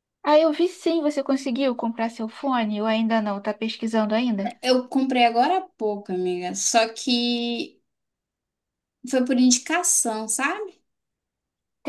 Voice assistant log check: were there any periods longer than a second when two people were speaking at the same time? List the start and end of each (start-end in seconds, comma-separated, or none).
none